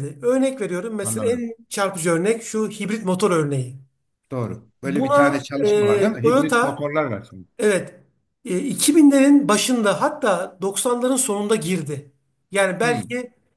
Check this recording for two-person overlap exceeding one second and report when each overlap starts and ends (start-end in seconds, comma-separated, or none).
4.8-6.8